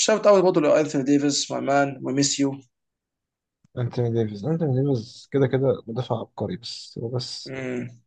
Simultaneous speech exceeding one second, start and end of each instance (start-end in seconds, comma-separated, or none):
none